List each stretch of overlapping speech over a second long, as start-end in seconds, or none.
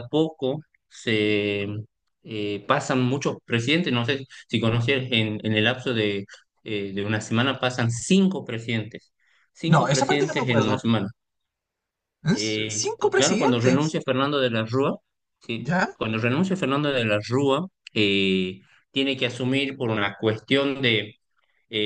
9.6-10.8, 12.3-14.0